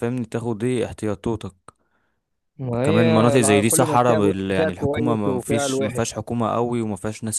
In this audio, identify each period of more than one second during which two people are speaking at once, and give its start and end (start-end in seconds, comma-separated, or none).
2.6-6.0